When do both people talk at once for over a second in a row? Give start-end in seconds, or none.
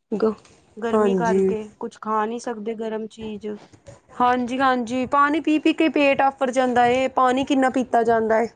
none